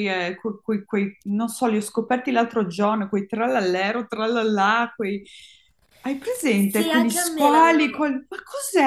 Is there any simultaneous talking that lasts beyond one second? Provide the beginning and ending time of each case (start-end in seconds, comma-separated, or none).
6.5-8.1